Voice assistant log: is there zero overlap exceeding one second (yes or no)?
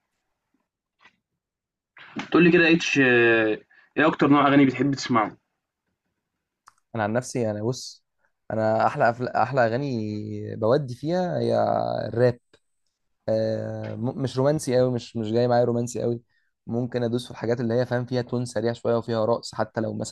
yes